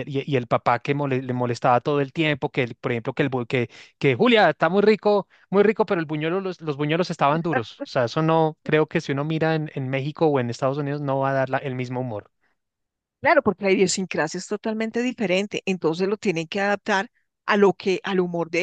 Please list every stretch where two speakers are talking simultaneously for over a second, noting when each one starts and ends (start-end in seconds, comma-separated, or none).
none